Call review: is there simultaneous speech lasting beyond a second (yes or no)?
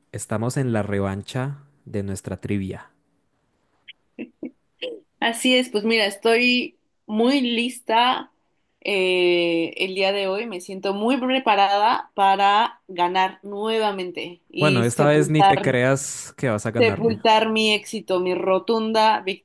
yes